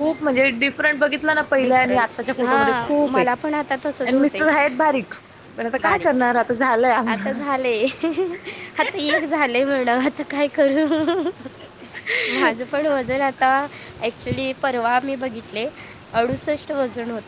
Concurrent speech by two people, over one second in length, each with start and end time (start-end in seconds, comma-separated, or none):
1.6-3.2